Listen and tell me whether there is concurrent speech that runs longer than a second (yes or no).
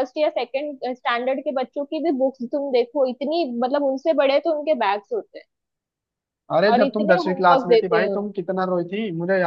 yes